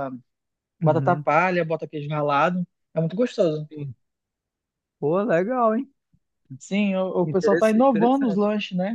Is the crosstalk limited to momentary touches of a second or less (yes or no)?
no